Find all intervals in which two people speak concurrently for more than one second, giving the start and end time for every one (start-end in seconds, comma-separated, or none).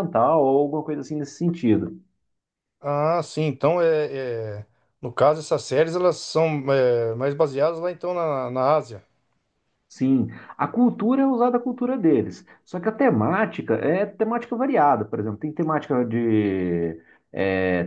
none